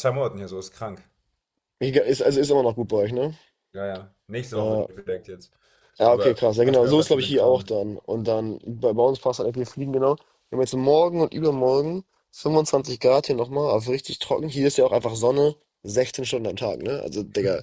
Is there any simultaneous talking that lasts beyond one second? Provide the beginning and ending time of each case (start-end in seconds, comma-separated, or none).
6.1-7.7